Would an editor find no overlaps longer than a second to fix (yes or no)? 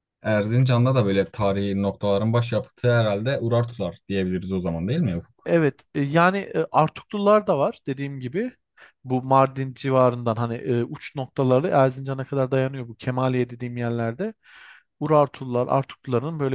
yes